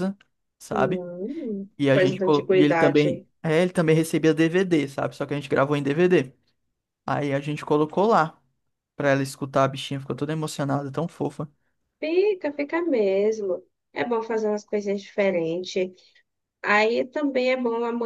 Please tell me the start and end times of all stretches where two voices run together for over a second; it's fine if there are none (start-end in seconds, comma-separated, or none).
1.8-3.1